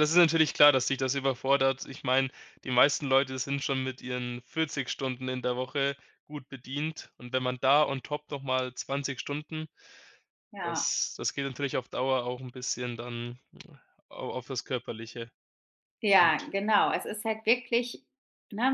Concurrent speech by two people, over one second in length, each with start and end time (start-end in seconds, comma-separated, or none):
none